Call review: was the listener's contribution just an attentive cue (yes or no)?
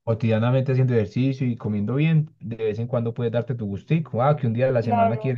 yes